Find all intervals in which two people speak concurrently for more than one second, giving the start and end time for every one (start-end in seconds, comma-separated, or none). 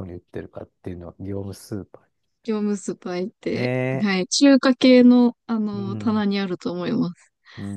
none